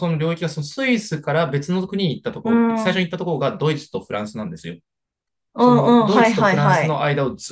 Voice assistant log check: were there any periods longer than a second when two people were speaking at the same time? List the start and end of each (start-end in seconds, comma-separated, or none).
5.6-7.0